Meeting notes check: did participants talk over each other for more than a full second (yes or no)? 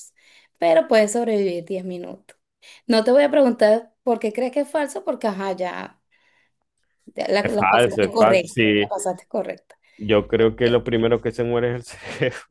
yes